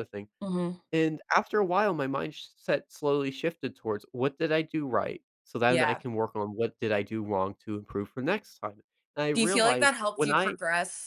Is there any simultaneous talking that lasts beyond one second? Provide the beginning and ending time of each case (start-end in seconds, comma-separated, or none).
9.3-10.6